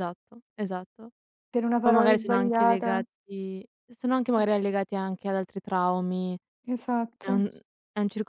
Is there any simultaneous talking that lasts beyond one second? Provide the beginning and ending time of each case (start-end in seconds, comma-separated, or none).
1.8-3.0